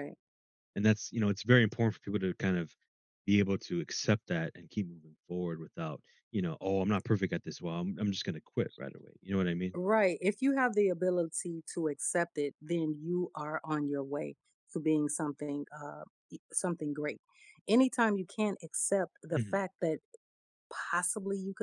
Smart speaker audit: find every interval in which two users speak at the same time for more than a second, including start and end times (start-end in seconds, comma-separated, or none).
none